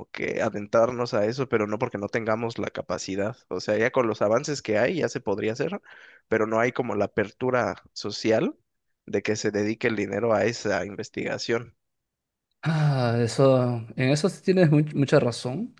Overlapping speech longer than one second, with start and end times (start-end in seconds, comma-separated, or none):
none